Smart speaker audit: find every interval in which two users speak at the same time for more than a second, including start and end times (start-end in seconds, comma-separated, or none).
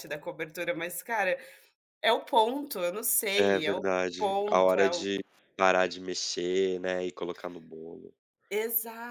3.3-5.1